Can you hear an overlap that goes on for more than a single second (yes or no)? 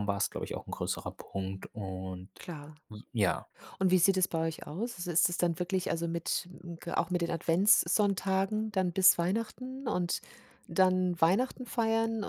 no